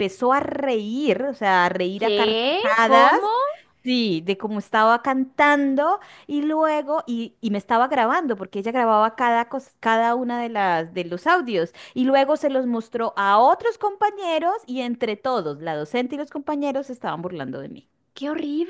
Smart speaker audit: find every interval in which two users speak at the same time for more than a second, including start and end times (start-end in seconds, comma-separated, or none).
1.9-3.2